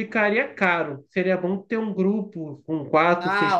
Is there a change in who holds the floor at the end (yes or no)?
no